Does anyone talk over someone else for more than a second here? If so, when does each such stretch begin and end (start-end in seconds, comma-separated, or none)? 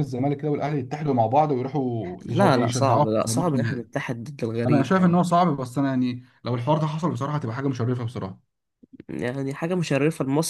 2.2-3.9